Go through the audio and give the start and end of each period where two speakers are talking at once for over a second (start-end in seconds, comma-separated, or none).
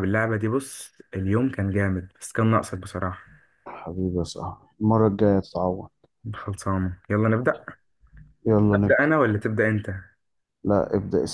none